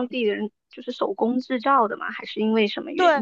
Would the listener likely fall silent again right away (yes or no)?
no